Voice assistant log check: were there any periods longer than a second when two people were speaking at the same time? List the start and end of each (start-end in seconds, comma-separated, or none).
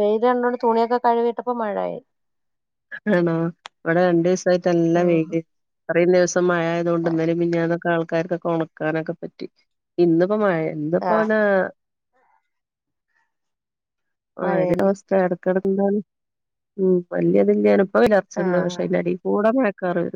none